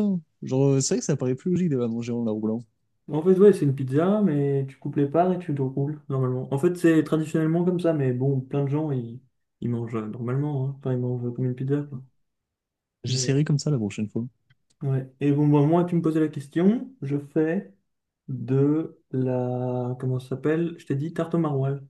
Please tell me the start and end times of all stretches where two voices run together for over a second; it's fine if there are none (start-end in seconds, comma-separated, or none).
none